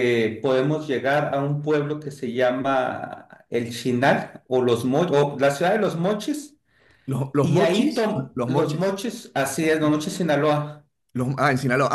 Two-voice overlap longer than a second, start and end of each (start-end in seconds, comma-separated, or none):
7.4-9.0